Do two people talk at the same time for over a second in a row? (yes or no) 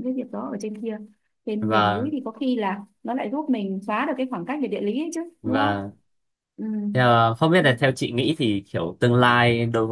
no